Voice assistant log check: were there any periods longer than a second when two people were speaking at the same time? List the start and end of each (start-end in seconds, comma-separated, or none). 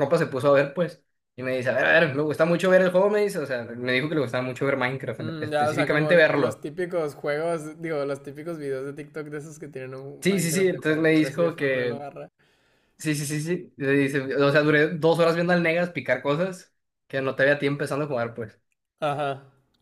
5.2-6.7, 10.2-12.0